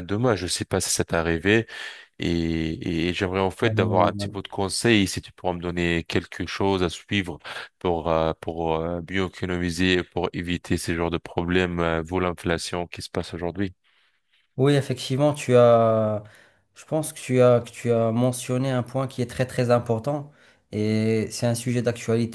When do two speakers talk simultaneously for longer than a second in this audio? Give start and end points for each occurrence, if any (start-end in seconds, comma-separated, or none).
none